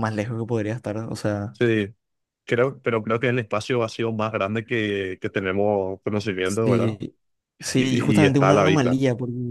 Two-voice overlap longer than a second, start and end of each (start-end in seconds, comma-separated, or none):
7.7-9.0